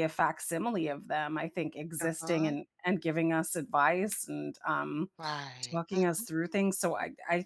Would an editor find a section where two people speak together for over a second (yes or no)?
no